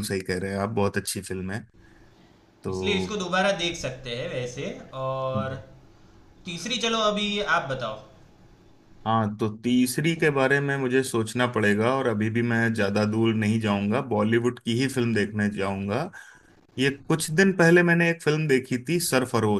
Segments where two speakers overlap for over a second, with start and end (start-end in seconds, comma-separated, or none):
none